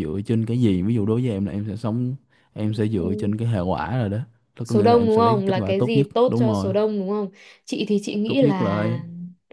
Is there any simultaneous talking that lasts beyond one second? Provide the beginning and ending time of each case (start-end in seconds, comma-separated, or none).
4.6-6.7